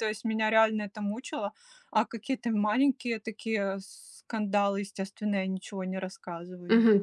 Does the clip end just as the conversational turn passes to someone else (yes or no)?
yes